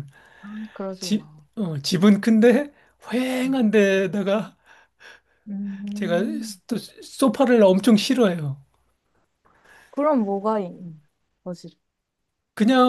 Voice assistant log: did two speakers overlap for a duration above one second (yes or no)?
no